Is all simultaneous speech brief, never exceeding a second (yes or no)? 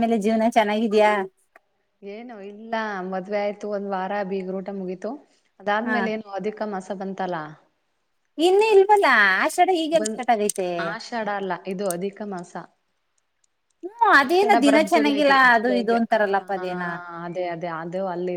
no